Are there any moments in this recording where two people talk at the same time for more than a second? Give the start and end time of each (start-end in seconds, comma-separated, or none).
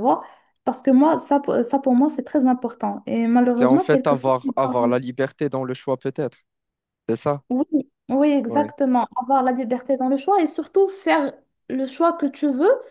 3.5-5.0